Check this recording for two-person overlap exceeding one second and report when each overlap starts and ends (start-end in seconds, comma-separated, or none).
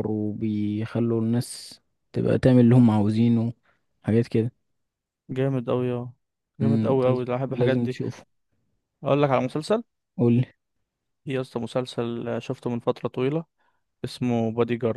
6.6-8.0